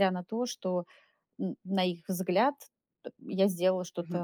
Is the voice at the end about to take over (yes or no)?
yes